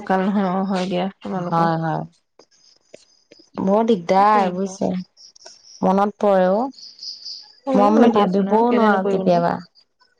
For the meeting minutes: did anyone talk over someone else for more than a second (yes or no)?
yes